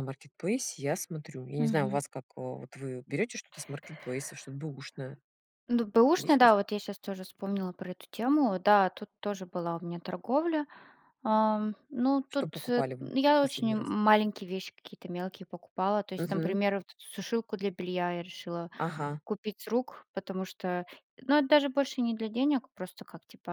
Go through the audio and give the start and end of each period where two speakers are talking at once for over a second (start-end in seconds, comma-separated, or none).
12.3-13.9